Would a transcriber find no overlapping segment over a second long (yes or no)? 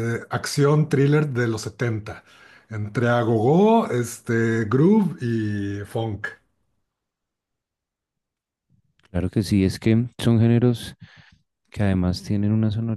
yes